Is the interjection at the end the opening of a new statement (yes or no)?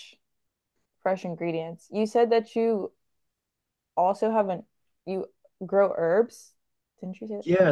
yes